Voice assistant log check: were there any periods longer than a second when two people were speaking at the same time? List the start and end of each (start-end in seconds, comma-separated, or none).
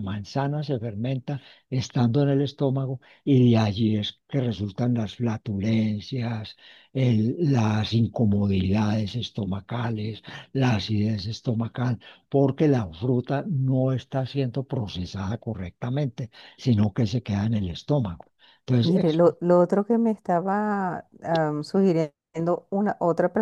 none